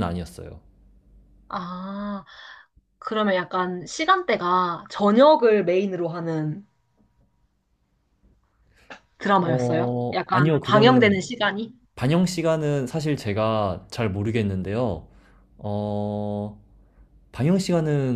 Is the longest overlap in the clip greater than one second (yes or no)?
yes